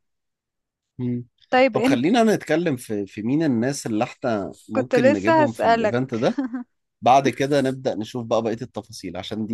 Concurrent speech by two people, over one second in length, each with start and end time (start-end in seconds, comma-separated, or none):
4.8-6.0